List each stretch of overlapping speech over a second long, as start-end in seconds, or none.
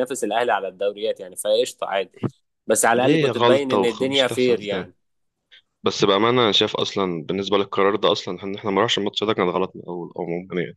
3.0-4.9